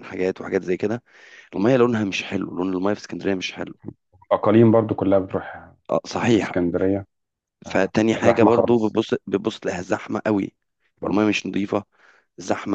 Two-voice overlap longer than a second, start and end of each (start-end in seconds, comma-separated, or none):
7.7-9.0